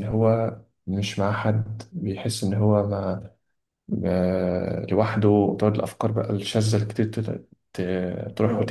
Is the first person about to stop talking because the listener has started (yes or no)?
yes